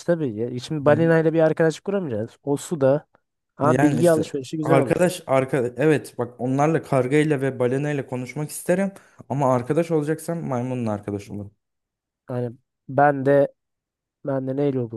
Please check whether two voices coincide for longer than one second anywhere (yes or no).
yes